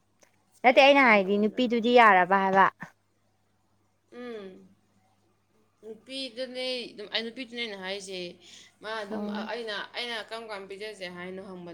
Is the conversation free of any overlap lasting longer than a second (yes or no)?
no